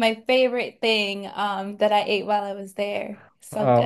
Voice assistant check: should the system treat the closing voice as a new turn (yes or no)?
yes